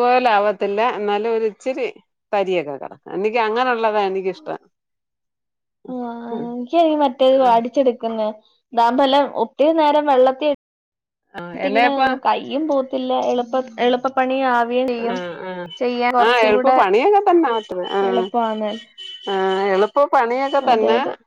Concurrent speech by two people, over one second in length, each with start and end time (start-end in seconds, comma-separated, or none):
none